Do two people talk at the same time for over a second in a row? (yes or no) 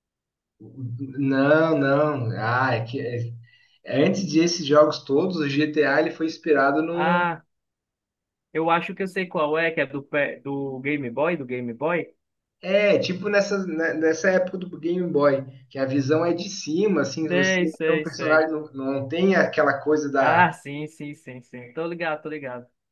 yes